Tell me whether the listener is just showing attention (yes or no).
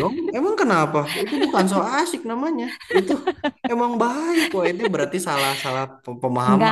no